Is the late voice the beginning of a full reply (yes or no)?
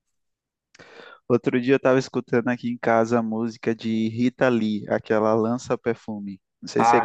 yes